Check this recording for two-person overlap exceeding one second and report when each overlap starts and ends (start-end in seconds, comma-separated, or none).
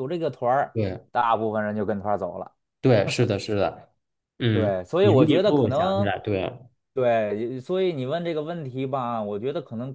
4.5-6.1